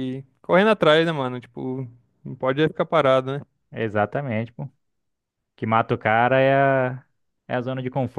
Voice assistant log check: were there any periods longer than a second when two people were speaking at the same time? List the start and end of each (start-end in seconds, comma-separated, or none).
none